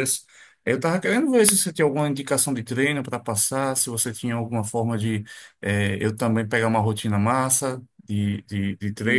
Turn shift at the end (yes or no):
no